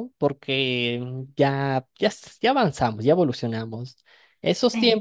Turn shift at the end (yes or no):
no